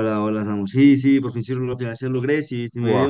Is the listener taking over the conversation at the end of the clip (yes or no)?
no